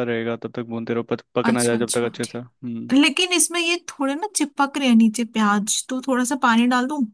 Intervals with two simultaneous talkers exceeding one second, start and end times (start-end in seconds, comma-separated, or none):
1.4-2.9